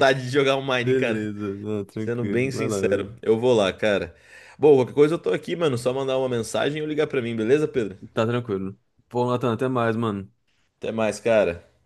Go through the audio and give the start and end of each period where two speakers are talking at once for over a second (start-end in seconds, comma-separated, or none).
2.0-3.2